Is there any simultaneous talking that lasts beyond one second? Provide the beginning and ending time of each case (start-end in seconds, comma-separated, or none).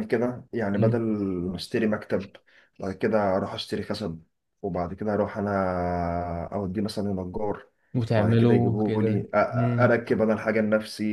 8.1-9.9